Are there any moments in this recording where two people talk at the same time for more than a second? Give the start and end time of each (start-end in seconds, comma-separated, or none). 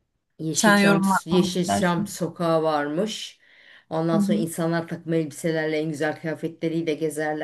0.5-2.2